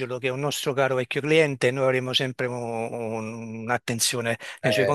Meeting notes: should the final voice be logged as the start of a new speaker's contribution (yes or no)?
no